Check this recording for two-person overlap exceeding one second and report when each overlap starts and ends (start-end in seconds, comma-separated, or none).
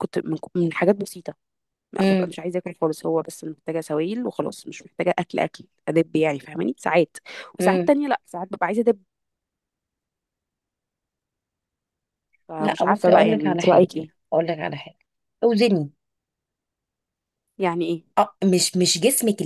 12.6-13.9